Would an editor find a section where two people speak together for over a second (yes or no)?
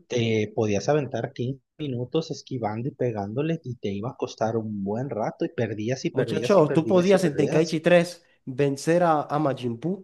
yes